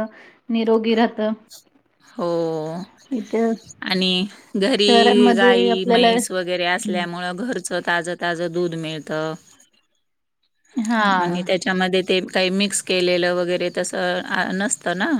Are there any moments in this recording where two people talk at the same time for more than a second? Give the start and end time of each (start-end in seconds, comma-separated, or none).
4.8-6.1